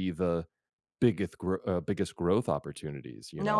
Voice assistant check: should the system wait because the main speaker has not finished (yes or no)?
no